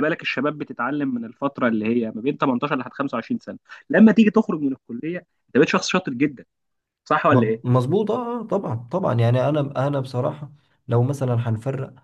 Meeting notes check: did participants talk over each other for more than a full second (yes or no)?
no